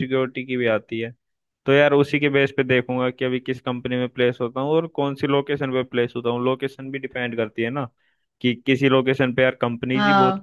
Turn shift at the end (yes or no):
no